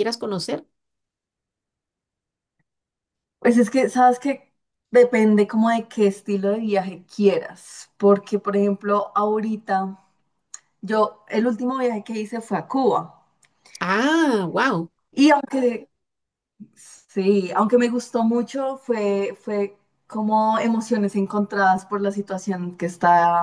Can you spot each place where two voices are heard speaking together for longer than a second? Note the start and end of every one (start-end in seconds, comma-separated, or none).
none